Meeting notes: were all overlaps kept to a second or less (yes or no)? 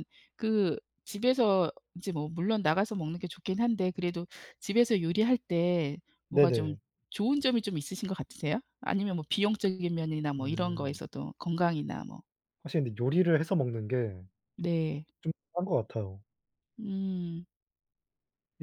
yes